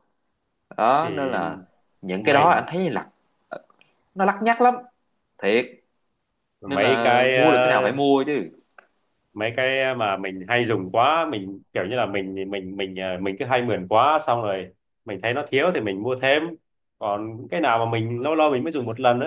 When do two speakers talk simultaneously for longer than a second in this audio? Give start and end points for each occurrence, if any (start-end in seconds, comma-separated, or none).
6.7-8.0